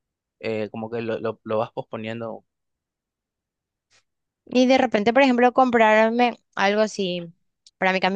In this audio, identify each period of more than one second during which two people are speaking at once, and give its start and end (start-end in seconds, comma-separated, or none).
none